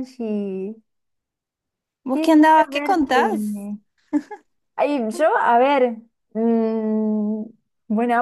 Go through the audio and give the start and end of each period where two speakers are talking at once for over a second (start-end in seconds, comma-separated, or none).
2.1-3.7